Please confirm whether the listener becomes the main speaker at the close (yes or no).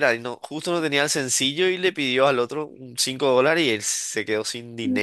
no